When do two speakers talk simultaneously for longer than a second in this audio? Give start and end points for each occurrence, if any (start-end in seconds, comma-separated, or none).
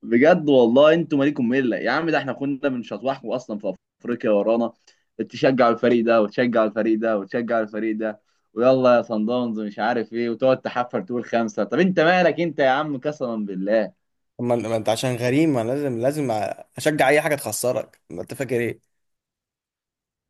none